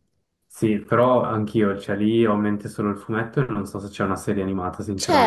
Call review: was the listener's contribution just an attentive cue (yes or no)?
no